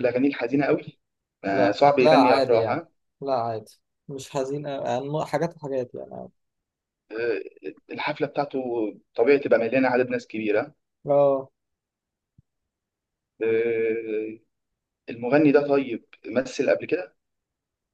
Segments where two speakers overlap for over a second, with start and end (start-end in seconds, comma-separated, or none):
1.5-2.8